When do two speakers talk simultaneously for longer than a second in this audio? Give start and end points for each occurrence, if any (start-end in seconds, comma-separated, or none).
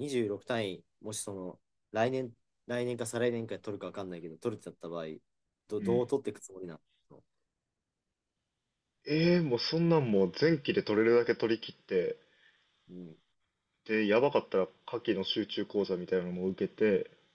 none